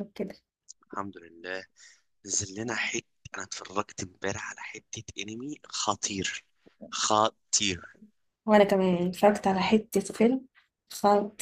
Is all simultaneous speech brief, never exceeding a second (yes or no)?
yes